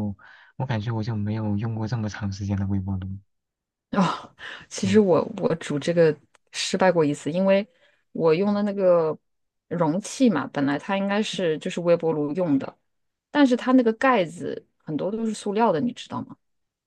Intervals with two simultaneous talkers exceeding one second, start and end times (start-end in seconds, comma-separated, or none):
none